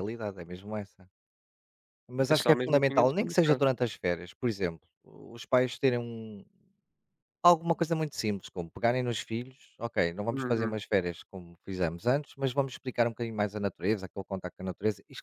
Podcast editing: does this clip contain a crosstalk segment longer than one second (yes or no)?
yes